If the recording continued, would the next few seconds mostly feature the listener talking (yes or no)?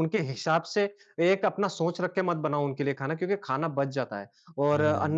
no